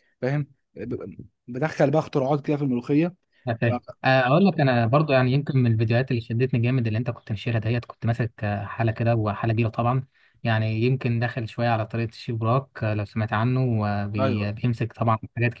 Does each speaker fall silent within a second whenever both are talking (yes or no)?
yes